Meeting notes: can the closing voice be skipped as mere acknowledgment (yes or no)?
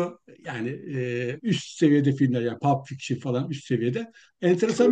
yes